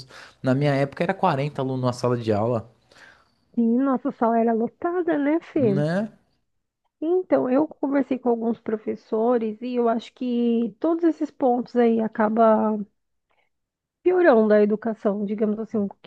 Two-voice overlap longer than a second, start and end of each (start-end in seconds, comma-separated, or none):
none